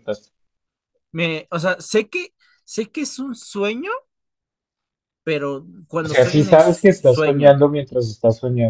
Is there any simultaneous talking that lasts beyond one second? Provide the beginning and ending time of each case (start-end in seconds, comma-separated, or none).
6.0-7.6